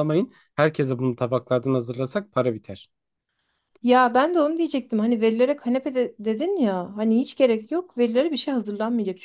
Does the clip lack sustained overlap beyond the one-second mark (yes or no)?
yes